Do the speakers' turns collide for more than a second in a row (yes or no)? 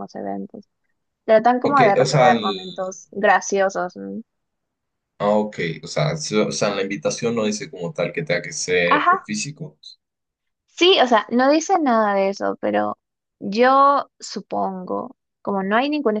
yes